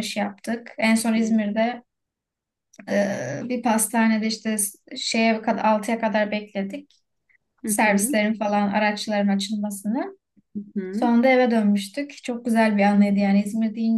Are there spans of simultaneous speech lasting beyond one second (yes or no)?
no